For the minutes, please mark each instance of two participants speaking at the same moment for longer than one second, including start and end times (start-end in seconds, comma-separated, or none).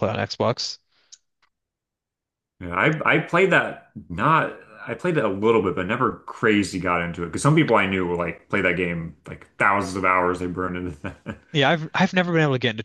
none